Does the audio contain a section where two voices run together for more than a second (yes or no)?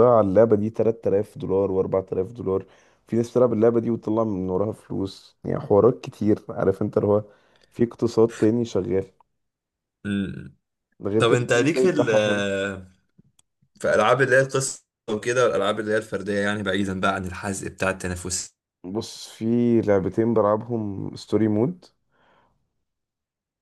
yes